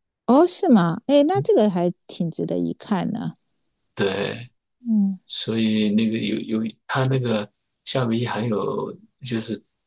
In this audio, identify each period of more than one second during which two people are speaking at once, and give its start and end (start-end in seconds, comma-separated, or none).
none